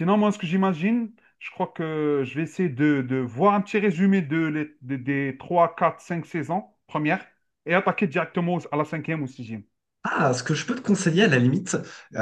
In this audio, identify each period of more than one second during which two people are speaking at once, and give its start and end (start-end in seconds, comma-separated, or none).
none